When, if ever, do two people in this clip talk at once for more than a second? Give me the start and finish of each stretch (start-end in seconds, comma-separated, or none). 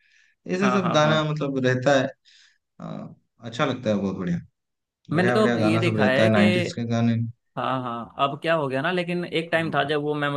5.1-6.5